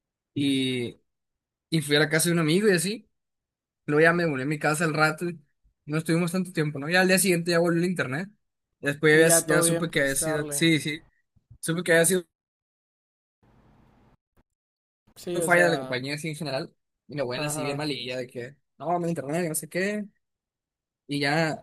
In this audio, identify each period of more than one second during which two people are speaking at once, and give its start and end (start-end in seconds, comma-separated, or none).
9.1-10.6